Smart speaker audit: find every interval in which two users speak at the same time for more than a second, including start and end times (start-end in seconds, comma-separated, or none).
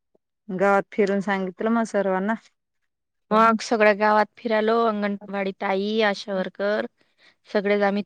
none